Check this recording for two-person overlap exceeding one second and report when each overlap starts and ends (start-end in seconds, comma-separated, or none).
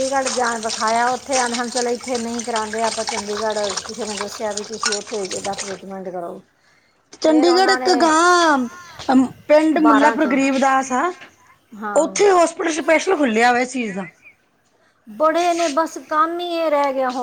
none